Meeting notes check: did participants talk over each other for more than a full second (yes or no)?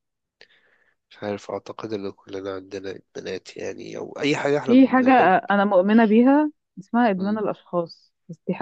no